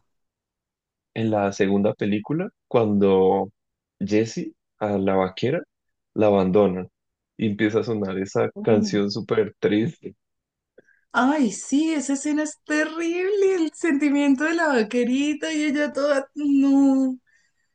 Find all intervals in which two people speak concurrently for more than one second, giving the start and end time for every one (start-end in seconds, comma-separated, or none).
none